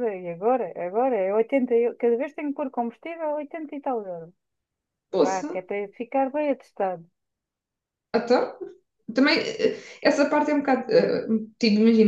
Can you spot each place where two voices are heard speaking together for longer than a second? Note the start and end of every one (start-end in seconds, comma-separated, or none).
none